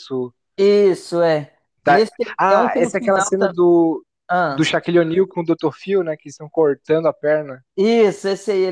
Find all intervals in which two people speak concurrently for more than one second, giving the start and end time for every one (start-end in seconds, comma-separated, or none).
1.8-3.6